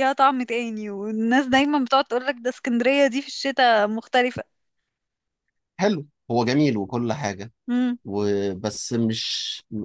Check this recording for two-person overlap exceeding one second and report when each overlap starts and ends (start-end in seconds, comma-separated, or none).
none